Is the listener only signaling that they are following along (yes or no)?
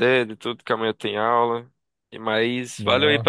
yes